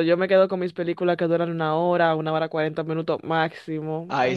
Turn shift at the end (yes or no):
yes